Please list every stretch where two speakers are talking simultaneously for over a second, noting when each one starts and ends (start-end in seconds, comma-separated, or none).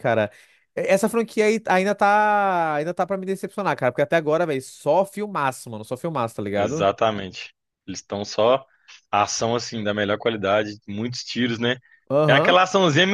none